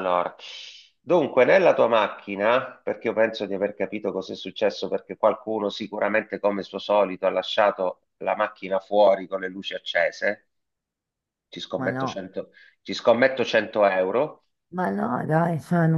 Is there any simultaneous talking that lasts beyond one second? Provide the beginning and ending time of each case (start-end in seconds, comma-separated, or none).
none